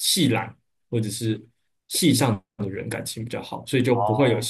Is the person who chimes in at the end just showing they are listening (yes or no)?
yes